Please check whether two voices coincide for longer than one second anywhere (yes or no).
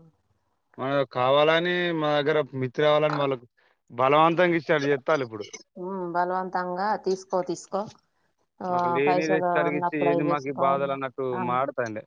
yes